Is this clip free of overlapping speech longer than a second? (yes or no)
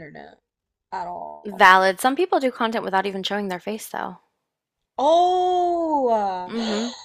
yes